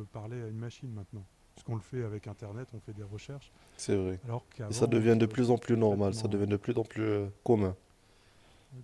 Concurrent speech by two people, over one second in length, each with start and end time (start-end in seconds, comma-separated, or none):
4.7-6.6